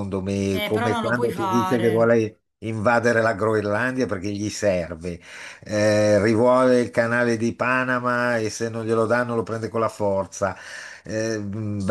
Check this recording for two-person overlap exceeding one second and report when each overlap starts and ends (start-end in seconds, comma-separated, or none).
0.5-2.2